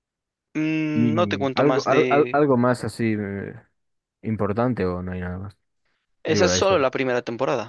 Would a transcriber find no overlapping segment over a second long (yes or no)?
no